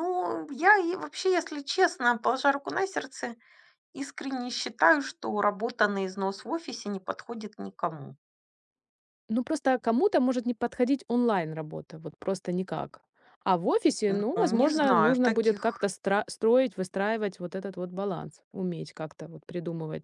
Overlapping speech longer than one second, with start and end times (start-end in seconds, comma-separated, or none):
14.1-15.9